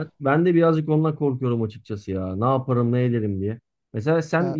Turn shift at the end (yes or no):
no